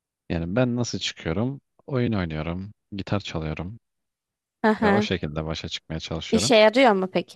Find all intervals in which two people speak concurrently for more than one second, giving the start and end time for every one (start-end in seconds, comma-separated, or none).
none